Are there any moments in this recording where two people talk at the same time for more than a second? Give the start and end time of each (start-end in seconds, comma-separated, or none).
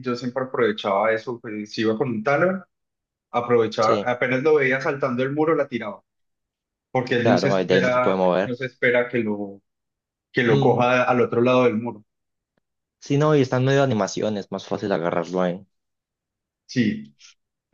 7.2-8.6